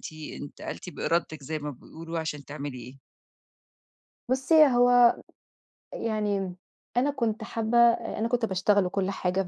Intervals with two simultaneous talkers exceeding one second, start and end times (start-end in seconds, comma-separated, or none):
none